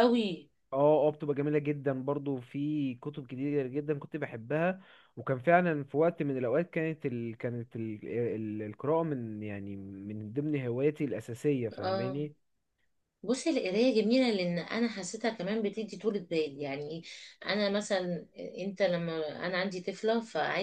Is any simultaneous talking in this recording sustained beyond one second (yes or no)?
no